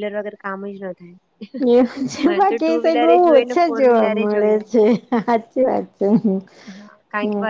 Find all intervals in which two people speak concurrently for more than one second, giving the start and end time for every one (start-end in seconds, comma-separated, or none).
2.2-4.6